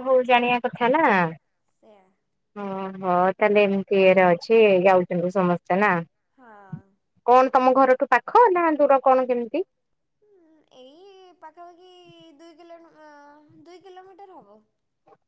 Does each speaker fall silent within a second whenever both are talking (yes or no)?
yes